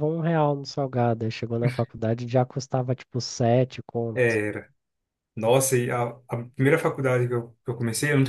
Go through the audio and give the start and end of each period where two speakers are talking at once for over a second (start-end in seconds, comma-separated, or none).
none